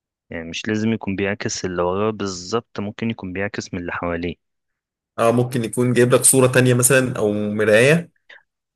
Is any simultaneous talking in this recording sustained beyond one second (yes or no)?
no